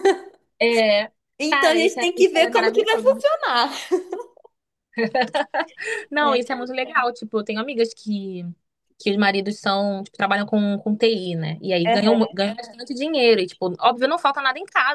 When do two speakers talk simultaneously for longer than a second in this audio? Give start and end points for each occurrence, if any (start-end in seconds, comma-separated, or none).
1.5-3.2